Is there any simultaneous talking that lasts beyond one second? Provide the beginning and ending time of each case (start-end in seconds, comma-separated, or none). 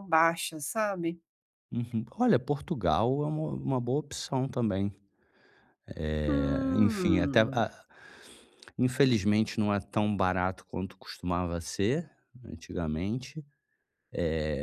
6.2-7.6